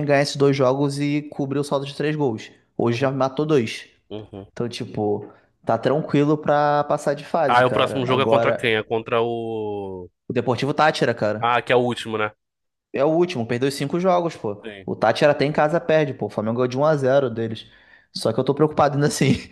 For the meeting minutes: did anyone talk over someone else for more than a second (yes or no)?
yes